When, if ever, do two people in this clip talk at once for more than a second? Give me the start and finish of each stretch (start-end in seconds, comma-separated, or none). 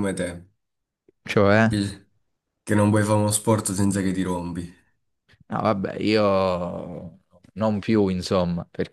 none